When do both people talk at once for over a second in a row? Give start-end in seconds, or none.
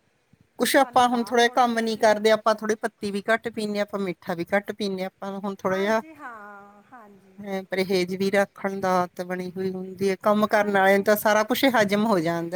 0.8-2.2